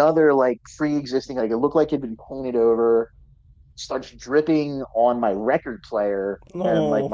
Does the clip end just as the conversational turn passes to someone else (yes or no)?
no